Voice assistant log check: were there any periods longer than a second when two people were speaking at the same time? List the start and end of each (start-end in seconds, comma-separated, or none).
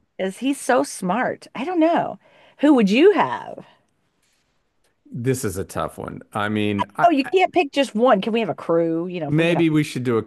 none